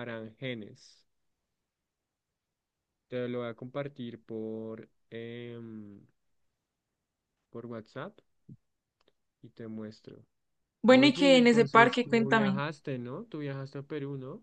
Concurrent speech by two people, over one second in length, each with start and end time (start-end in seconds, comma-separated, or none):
10.9-12.6